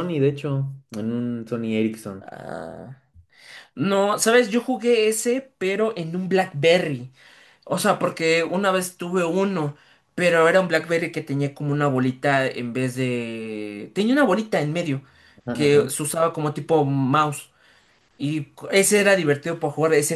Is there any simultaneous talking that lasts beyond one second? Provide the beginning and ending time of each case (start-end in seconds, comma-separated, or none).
none